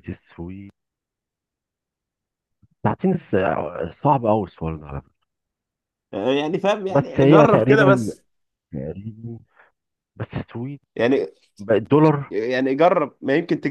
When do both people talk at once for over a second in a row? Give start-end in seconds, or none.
6.9-8.2